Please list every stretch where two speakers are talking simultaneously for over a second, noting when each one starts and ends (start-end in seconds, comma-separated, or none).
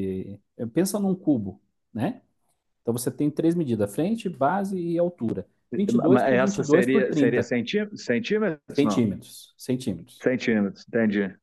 5.9-7.5